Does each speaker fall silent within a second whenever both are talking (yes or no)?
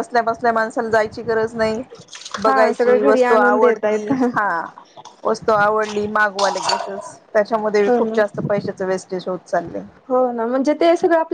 no